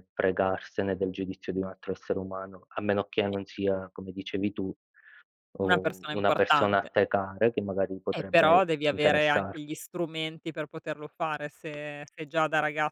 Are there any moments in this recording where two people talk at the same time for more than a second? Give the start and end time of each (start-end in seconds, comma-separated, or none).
5.7-6.9, 8.1-9.8